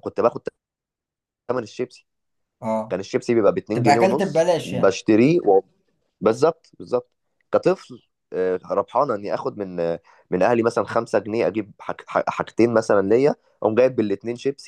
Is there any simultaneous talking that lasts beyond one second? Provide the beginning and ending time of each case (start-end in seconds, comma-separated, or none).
3.7-4.9